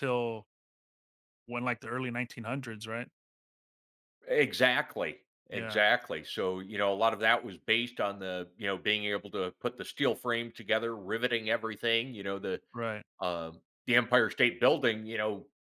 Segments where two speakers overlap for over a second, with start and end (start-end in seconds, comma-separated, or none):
none